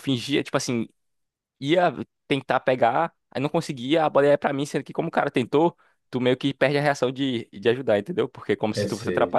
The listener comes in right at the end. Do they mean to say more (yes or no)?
no